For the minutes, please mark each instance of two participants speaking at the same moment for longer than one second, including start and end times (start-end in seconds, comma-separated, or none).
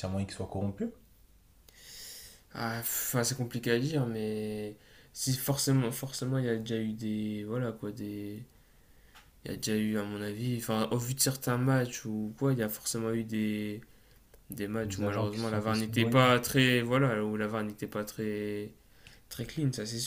14.8-16.2